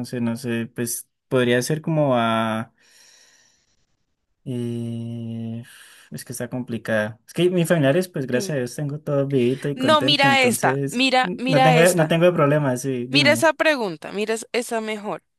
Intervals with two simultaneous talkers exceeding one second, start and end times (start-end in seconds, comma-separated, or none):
9.7-12.2